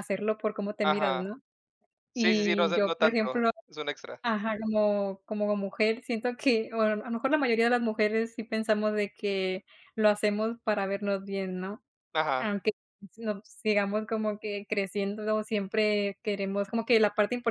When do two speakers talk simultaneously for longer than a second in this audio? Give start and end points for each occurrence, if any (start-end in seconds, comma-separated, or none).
2.1-3.5